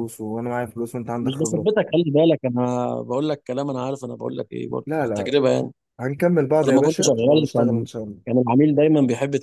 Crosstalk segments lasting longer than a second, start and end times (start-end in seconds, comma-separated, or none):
6.7-7.9